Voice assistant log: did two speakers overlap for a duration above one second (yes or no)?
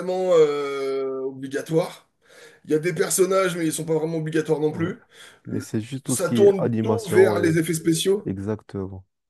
yes